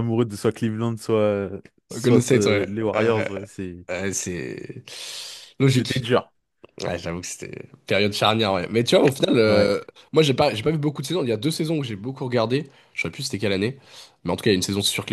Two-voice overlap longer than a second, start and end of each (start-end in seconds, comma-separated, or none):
1.9-3.2